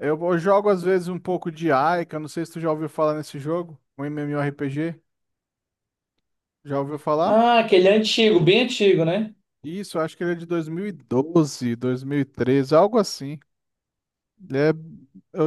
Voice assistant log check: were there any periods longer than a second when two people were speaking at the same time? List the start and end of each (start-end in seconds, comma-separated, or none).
none